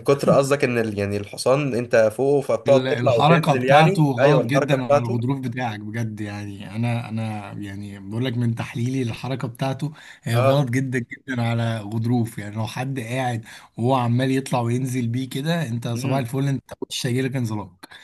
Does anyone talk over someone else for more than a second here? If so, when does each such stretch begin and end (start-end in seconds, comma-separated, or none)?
2.7-5.2